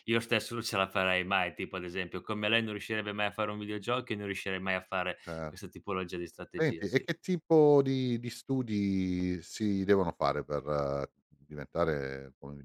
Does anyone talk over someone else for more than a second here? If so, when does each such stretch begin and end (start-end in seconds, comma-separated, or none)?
none